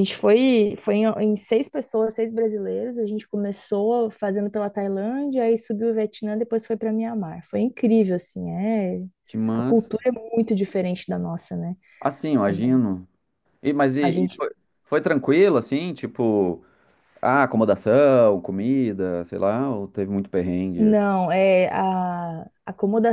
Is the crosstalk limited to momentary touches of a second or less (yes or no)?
yes